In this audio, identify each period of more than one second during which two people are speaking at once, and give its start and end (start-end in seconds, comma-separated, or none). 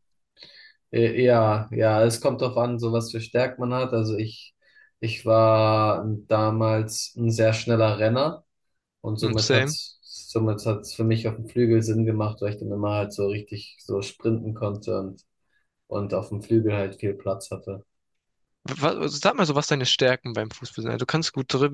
none